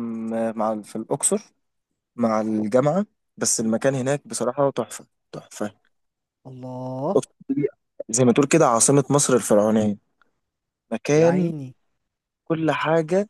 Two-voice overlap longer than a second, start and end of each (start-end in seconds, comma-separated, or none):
none